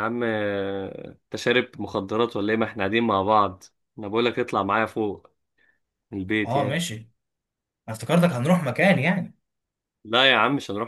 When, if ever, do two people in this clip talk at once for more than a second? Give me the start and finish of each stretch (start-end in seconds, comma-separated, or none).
none